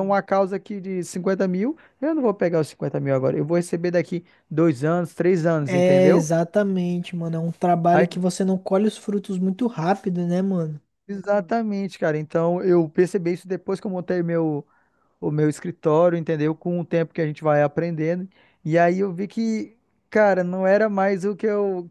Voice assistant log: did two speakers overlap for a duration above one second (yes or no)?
no